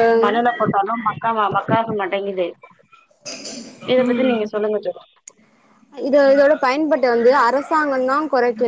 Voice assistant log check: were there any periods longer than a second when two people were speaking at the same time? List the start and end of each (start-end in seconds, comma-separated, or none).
none